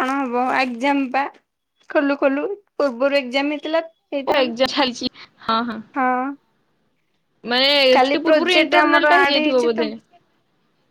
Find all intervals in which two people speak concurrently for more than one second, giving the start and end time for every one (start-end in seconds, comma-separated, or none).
8.0-9.9